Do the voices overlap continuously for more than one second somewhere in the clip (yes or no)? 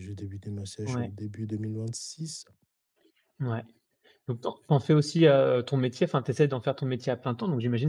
no